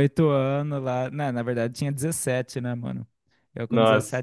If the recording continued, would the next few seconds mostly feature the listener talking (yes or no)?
no